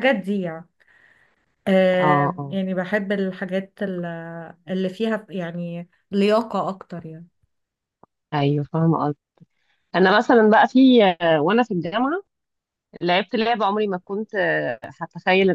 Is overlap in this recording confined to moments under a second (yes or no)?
yes